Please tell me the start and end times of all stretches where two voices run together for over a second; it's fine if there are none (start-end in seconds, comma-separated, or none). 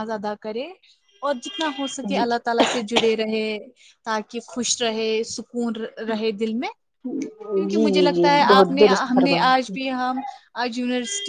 7.5-9.7